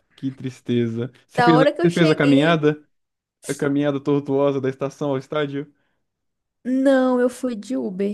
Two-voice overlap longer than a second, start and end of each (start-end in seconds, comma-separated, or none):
1.4-2.7